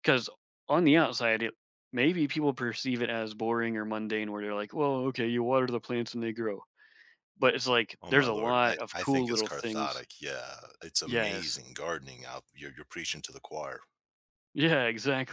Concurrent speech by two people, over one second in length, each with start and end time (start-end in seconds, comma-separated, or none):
8.0-10.0